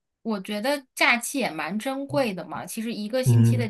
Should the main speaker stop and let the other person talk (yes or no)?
no